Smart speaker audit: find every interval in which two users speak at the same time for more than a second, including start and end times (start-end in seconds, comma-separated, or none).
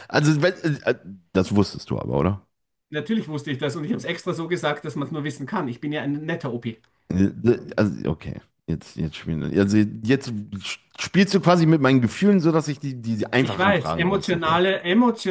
13.4-14.6